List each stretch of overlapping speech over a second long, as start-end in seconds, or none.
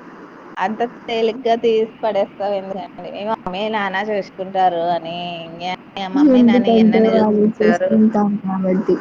6.4-7.9